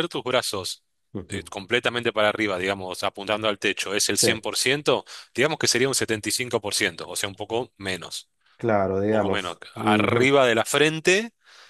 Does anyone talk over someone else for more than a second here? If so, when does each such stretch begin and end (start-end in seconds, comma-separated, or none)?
9.0-10.4